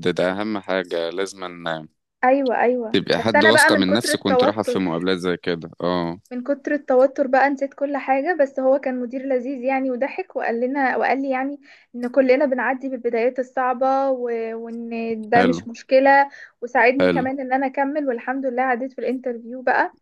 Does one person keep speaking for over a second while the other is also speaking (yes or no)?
yes